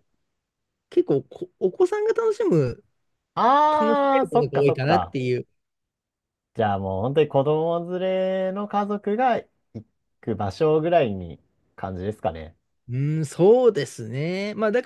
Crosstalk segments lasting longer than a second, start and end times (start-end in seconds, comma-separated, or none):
3.7-5.2